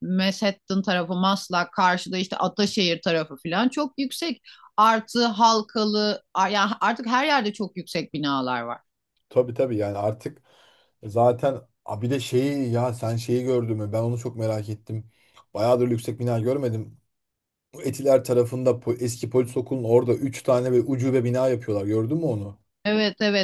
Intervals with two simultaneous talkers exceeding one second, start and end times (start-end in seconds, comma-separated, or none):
none